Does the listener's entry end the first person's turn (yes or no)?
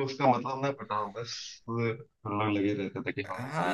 yes